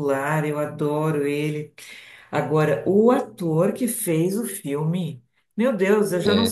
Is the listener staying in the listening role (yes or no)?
yes